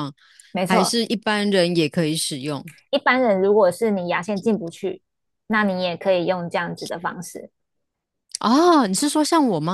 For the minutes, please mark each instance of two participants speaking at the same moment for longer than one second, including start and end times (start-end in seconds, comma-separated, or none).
none